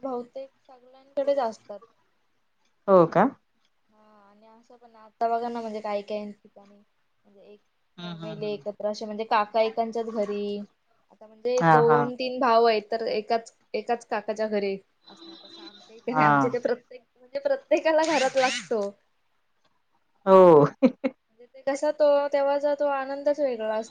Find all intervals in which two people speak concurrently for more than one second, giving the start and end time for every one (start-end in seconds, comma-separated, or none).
none